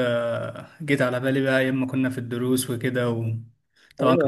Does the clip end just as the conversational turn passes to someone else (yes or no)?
yes